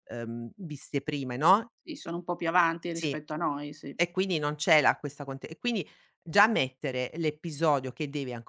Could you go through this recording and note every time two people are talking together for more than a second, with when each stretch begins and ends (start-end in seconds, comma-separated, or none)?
none